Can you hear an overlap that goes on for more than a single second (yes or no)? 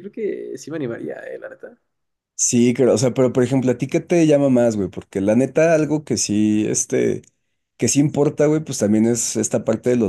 no